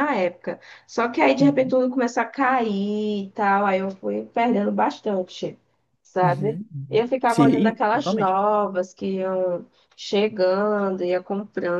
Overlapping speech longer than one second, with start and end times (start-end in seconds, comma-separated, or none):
6.2-8.4